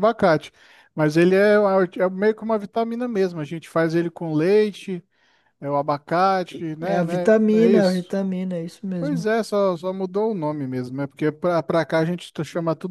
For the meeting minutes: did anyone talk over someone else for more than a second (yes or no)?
yes